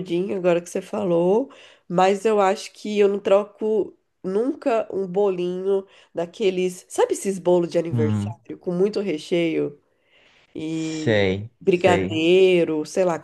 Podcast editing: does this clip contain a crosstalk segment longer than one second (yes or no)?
yes